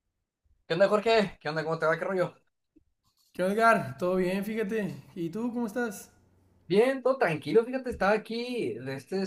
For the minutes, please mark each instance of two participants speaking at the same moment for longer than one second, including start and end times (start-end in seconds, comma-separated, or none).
none